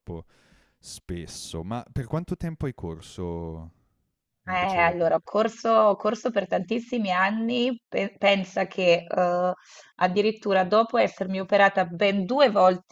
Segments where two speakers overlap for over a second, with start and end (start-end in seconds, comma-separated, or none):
none